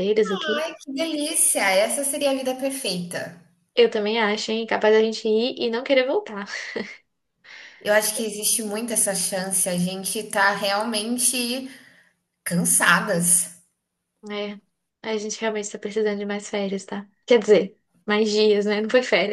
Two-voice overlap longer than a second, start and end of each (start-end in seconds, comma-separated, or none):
none